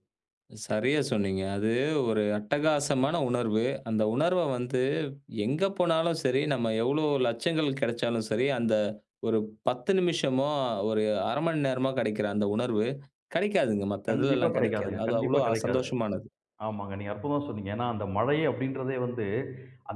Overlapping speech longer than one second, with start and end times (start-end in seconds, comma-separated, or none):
14.1-15.9